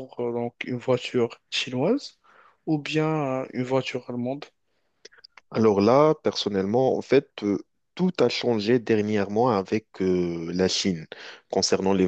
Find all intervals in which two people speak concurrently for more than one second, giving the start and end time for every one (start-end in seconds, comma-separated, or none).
none